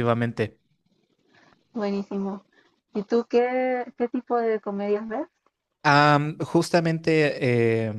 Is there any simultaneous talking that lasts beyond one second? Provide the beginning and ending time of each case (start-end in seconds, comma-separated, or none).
none